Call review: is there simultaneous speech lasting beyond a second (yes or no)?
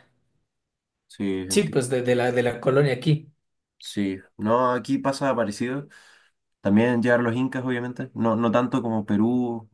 no